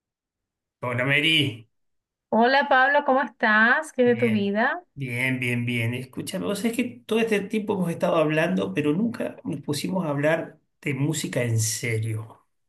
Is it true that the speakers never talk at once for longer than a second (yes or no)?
yes